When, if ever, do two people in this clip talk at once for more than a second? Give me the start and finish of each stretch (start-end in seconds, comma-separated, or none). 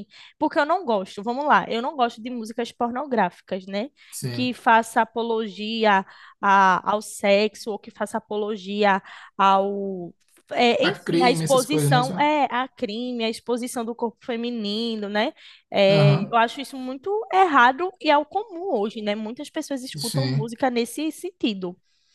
10.8-12.1